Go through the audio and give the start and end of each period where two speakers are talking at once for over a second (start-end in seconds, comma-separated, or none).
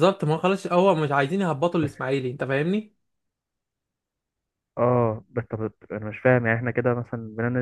none